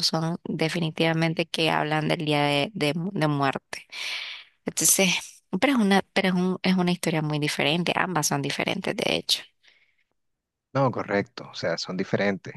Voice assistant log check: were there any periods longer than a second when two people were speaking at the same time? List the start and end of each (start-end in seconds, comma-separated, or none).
none